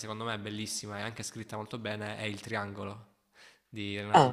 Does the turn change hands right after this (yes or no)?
yes